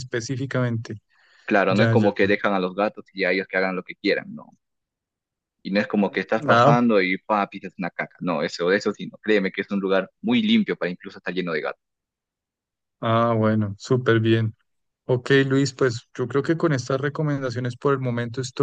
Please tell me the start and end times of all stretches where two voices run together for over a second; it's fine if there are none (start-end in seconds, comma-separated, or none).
none